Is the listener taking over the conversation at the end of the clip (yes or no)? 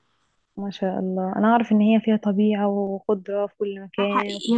yes